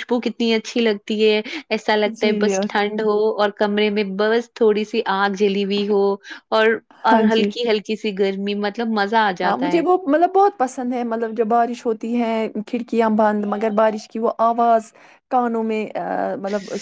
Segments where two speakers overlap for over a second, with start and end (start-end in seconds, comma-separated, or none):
none